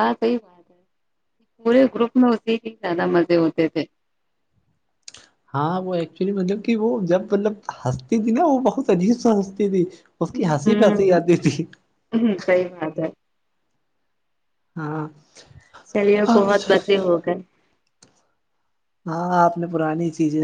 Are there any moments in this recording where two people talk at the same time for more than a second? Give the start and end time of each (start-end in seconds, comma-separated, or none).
none